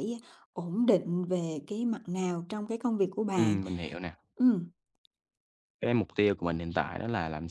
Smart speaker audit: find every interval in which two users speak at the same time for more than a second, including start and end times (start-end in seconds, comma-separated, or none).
none